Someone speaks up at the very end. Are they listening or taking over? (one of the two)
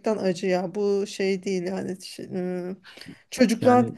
listening